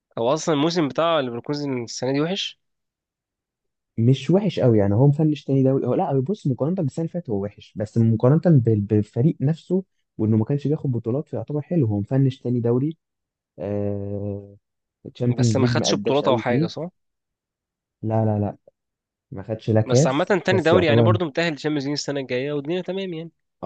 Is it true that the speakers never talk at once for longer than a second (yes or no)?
no